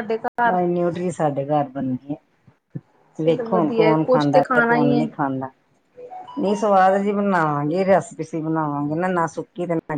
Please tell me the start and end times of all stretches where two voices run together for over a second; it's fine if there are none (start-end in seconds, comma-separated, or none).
3.2-5.1